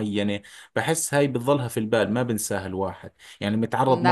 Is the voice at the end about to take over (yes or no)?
no